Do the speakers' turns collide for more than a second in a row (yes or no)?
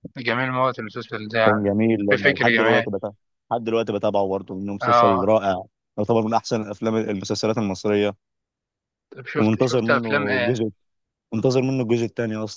yes